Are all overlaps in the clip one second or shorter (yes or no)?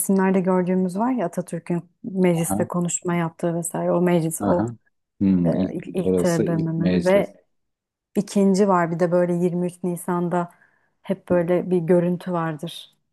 no